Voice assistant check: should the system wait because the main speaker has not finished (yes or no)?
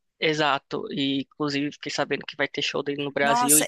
no